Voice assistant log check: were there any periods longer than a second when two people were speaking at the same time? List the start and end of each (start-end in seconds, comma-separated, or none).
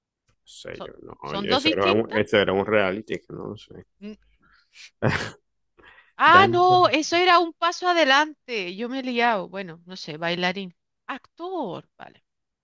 0.7-2.2